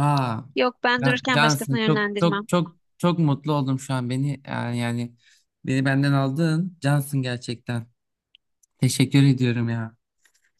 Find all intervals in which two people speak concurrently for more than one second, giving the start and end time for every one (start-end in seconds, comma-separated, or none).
1.0-2.5